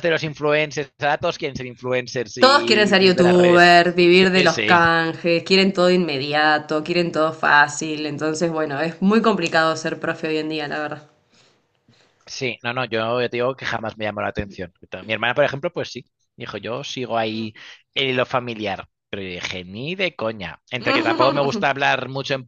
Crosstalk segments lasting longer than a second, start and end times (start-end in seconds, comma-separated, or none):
2.4-3.7